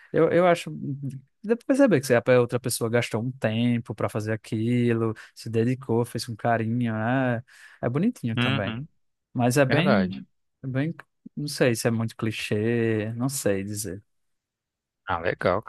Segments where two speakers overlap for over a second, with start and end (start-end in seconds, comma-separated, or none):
none